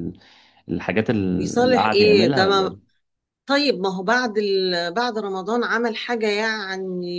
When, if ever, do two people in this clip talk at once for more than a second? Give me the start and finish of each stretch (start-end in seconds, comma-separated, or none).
1.4-2.8